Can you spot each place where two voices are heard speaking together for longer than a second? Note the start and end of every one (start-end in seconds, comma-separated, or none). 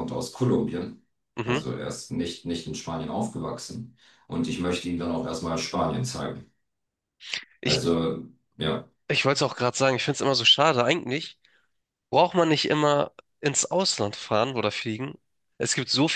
none